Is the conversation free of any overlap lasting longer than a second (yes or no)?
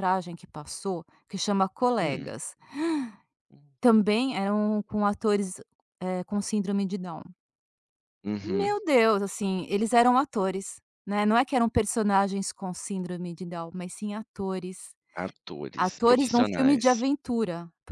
no